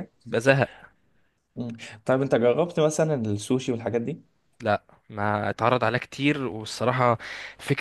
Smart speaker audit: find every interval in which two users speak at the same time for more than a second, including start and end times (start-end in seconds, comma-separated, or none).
none